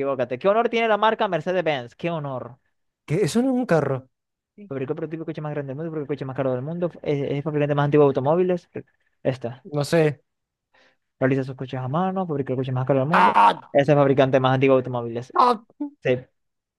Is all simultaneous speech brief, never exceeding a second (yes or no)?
yes